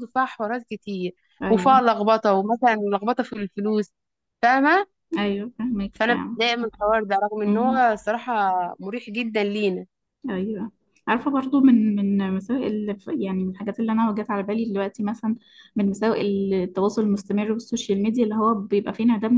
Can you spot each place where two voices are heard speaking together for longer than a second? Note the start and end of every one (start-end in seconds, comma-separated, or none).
none